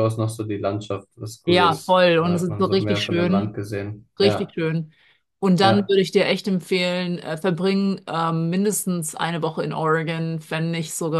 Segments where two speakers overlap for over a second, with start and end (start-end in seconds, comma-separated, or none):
1.4-3.5